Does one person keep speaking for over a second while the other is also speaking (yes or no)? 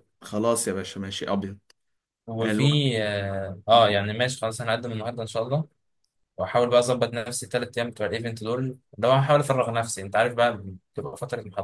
no